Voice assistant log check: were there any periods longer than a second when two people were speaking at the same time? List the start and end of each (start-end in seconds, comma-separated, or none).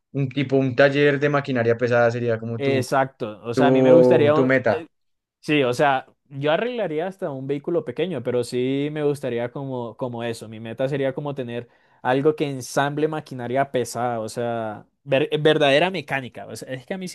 3.5-4.8